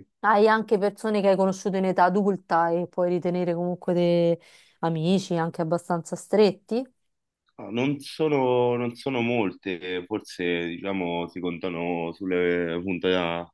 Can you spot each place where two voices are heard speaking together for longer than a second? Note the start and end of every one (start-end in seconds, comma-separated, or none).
none